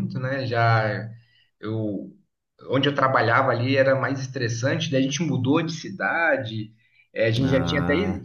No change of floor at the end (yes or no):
yes